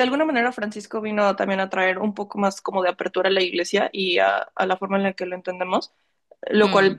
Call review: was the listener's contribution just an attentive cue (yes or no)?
yes